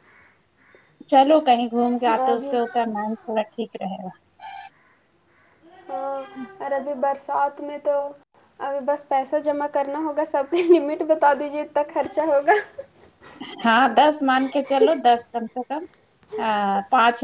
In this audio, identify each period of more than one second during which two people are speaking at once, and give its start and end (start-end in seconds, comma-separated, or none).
none